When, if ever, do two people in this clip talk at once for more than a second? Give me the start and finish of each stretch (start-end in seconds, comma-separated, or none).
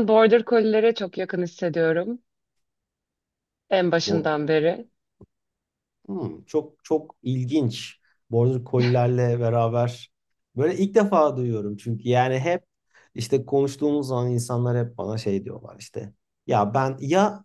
none